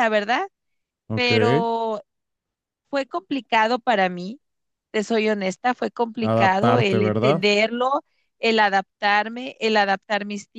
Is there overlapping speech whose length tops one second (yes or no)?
yes